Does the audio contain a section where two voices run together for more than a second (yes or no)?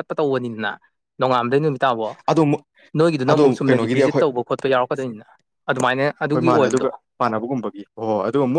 no